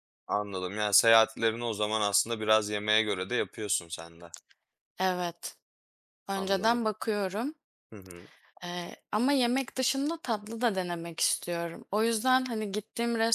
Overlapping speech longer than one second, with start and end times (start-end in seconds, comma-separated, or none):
none